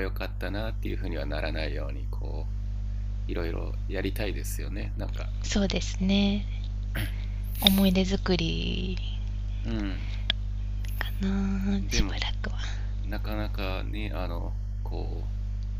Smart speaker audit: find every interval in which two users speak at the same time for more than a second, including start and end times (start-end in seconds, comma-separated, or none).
none